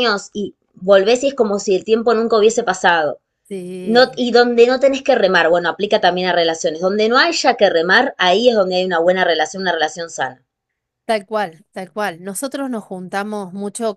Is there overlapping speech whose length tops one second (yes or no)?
no